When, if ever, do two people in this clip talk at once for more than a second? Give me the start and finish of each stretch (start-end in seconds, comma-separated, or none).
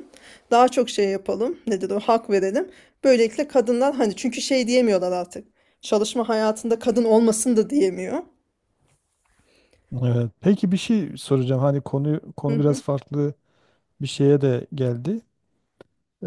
none